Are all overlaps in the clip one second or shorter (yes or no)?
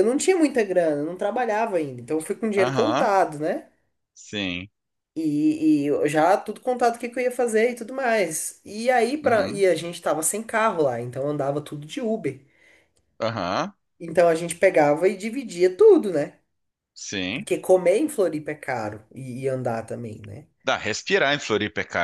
yes